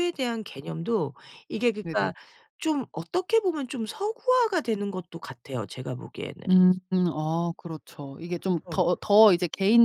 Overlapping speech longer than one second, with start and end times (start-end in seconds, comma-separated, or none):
none